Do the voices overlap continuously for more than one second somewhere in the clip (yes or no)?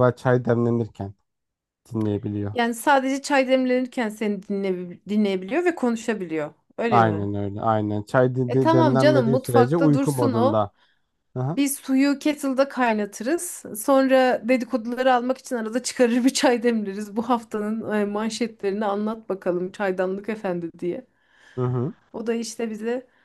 yes